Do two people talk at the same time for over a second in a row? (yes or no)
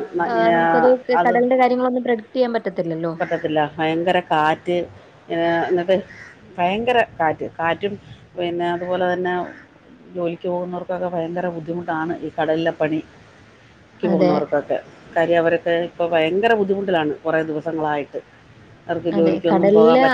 no